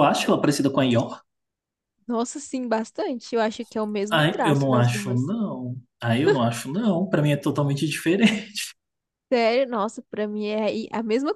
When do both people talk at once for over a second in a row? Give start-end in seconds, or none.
4.1-5.3